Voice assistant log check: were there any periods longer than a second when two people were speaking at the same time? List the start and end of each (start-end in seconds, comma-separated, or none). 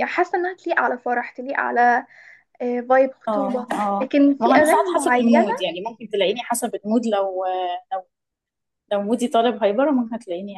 3.3-5.5